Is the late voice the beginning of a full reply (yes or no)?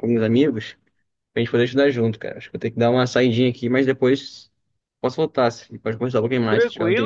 yes